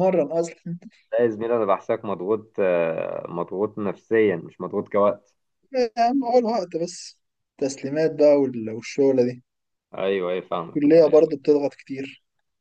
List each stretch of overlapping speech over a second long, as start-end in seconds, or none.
none